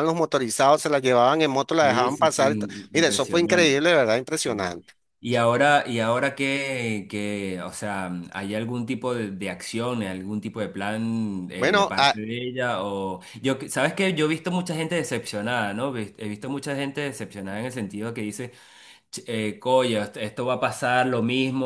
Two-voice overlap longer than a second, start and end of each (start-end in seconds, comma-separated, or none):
1.8-3.8